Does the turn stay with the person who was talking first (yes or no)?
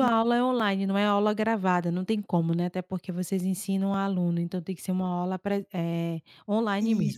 no